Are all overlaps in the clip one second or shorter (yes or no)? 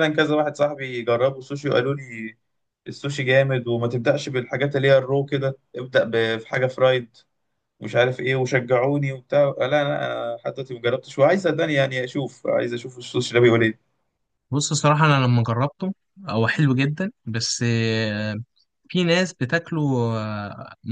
yes